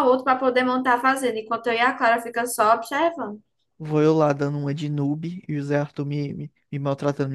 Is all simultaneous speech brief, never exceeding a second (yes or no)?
yes